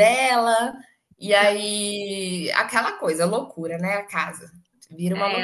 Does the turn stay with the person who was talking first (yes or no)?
no